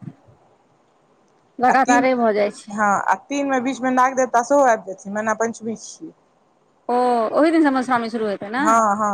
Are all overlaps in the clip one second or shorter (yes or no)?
yes